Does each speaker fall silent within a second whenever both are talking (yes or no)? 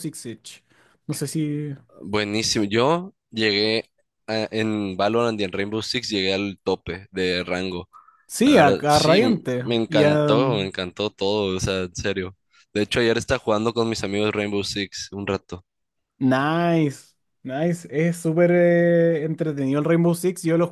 no